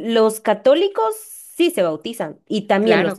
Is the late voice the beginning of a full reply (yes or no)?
yes